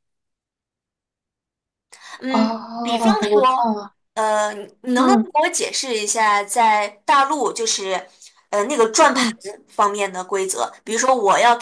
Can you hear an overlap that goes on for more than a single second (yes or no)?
yes